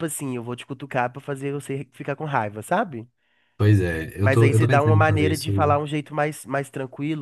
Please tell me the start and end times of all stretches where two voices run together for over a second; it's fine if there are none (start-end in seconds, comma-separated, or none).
4.2-5.8